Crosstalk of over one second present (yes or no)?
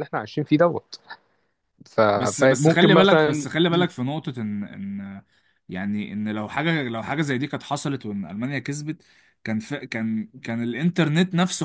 yes